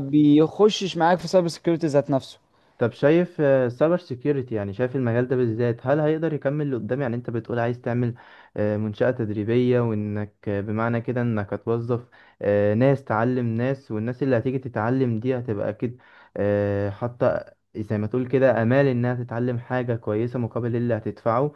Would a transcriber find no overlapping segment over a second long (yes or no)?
yes